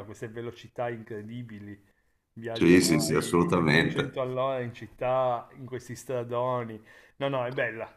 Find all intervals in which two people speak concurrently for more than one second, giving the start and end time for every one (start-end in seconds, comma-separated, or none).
2.5-4.2